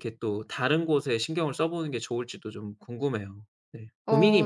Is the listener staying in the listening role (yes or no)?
no